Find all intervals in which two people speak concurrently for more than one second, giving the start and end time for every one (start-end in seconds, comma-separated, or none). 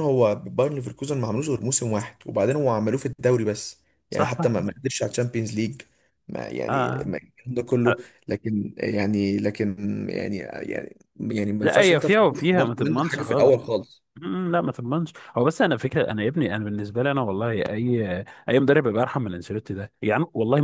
11.6-13.5